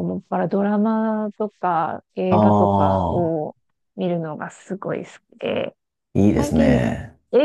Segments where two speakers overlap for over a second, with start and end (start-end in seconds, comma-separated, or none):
2.3-3.5